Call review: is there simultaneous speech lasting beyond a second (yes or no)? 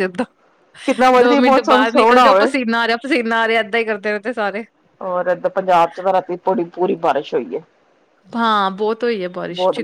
yes